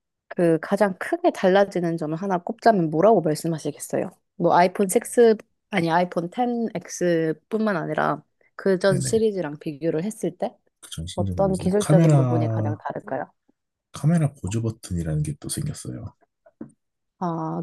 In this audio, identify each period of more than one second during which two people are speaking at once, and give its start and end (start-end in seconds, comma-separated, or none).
11.1-12.8